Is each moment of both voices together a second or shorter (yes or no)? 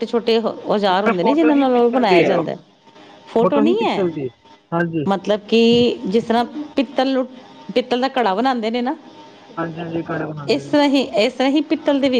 no